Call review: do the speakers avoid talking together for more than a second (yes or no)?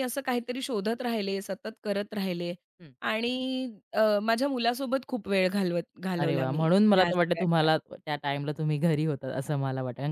no